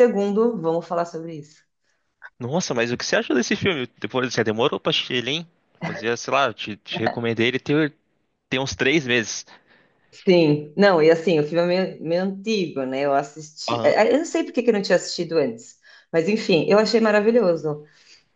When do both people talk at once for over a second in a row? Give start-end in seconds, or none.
none